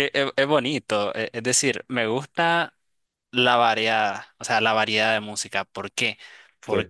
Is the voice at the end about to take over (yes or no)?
no